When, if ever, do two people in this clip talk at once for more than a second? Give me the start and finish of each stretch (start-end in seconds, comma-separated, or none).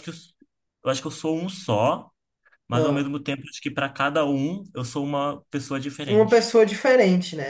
none